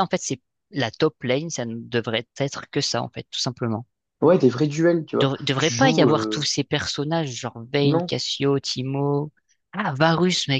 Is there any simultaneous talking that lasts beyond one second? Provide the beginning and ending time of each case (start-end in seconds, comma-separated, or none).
5.2-6.5